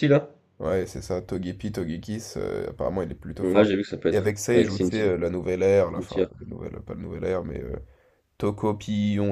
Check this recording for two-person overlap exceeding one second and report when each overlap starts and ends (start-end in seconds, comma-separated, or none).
3.4-5.1